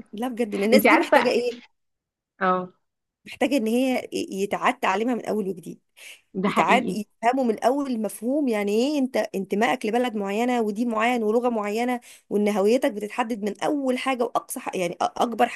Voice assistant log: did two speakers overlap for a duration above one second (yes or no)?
no